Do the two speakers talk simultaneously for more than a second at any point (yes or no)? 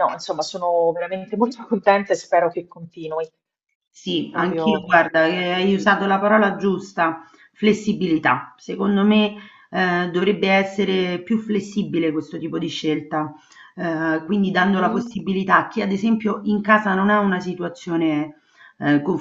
yes